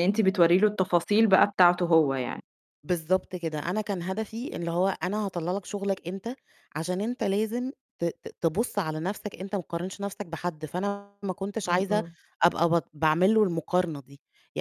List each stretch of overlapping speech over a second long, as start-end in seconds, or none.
none